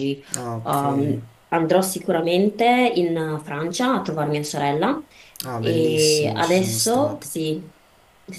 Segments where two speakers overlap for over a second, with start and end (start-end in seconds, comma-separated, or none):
5.6-7.3